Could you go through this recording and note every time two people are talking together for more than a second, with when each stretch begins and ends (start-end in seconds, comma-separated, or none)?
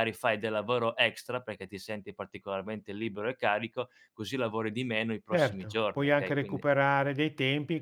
5.3-6.7